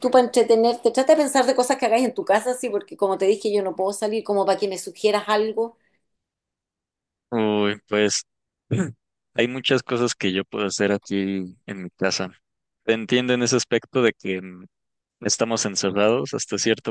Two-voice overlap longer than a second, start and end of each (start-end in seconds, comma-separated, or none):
none